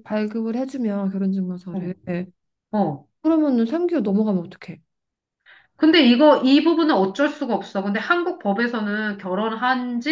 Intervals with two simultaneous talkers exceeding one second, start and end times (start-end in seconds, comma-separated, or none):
none